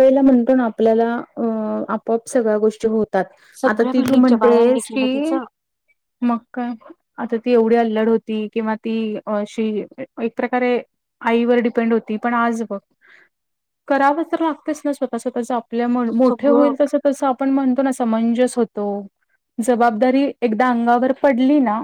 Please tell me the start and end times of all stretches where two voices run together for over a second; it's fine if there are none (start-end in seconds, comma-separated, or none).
3.7-5.4